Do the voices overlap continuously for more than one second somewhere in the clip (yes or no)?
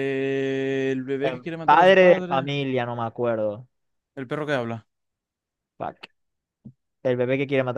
yes